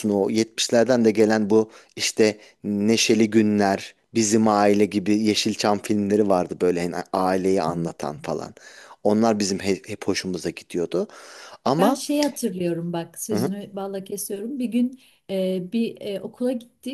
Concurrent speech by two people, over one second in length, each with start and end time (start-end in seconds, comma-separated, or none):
none